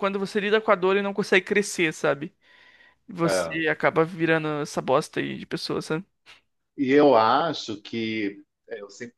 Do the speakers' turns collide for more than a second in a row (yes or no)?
no